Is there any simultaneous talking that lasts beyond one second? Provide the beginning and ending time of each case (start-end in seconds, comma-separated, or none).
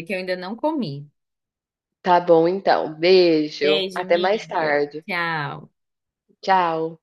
3.6-5.0